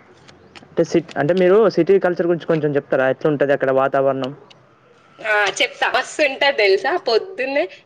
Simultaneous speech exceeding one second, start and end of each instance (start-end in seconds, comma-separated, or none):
none